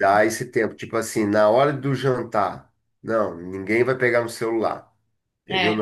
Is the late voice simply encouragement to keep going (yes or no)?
yes